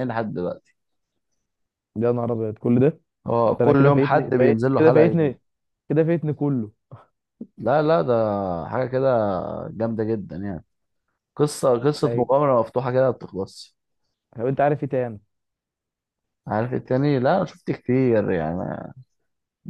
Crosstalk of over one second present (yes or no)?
yes